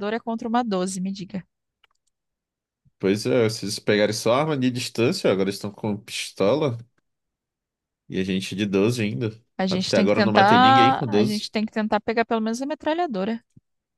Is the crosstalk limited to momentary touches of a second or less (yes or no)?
no